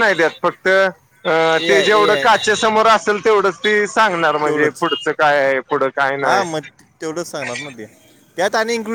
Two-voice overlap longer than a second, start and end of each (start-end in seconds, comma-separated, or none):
none